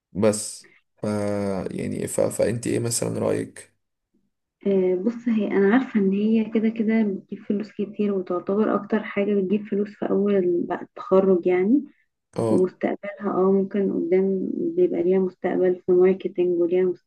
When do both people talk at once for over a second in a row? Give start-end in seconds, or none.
none